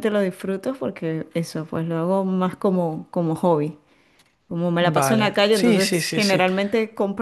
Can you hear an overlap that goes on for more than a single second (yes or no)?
yes